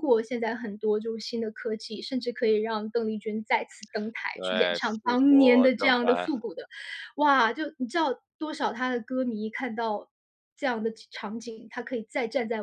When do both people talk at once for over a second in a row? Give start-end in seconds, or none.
4.3-6.3